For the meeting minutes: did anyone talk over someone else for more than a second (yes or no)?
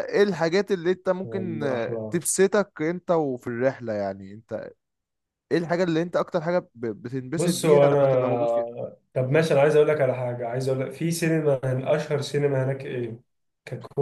yes